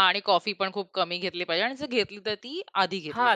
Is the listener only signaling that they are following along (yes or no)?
no